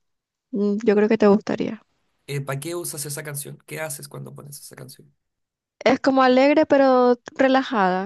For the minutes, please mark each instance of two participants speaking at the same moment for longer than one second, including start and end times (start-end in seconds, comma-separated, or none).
none